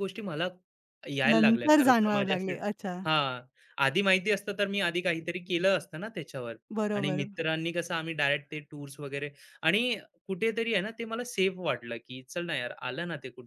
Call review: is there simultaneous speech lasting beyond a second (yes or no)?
yes